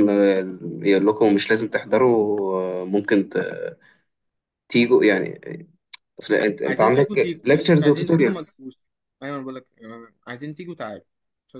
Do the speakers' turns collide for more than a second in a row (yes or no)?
yes